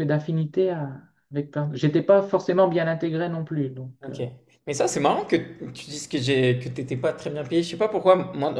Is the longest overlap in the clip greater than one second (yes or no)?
no